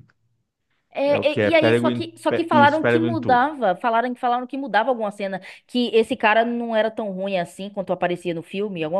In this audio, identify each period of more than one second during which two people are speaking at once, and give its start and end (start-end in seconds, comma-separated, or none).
1.1-3.5